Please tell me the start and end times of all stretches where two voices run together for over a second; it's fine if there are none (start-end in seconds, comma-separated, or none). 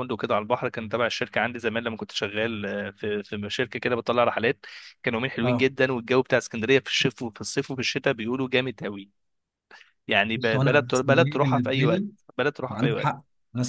10.3-12.1